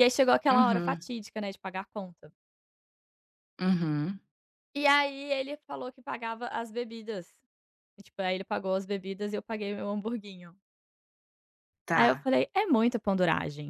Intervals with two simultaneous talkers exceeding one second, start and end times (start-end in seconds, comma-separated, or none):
none